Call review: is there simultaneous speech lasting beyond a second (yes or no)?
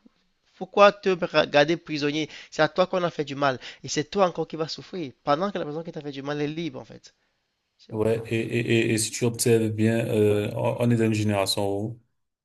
no